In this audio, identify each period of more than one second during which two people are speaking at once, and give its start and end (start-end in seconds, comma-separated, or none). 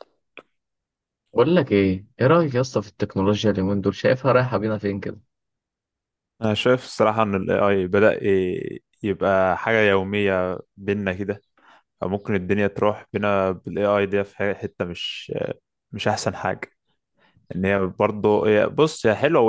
none